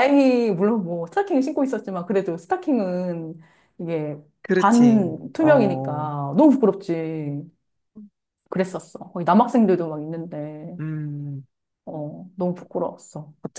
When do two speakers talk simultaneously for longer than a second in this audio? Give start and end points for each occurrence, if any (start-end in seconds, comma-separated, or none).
4.6-5.9